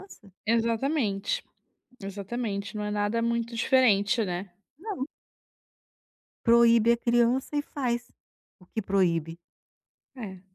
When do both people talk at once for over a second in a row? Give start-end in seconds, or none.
none